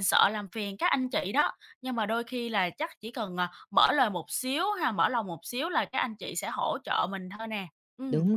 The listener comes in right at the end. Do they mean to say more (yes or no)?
yes